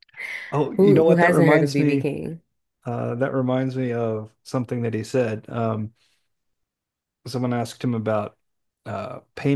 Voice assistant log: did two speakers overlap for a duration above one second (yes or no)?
yes